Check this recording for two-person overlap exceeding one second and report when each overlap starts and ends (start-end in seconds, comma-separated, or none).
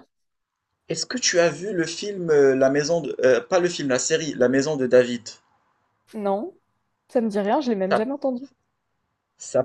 none